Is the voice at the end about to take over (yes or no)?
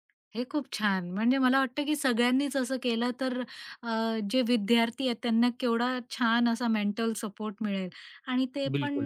no